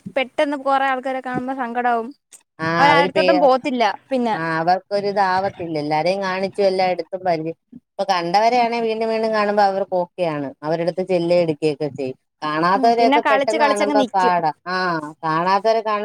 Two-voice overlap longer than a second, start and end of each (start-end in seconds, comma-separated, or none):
12.8-14.3